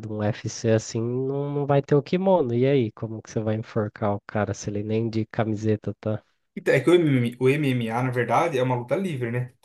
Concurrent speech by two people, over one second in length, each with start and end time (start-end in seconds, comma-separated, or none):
none